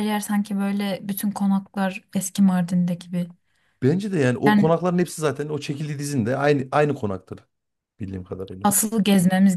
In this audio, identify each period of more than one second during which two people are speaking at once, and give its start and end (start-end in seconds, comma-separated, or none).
none